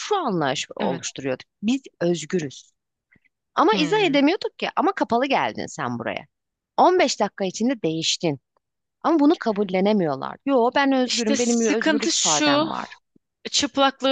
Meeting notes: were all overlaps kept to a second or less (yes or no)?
no